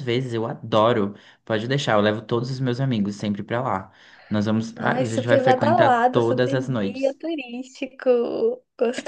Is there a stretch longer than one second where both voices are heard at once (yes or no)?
yes